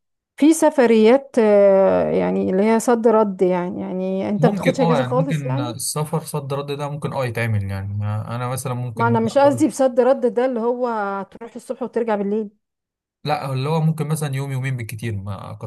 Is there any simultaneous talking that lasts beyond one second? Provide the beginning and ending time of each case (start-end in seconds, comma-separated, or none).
4.4-5.7